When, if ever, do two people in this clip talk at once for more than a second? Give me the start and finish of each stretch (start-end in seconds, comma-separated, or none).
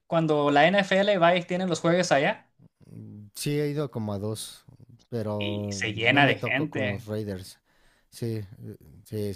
5.4-7.1